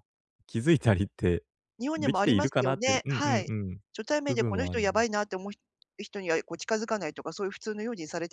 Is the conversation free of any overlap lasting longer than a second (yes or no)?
no